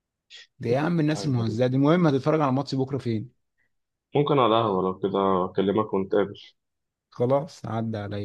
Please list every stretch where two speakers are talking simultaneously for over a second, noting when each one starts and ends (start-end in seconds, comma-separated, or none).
none